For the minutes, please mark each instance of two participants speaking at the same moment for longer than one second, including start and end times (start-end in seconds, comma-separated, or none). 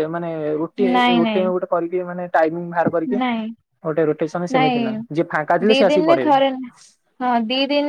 4.6-6.4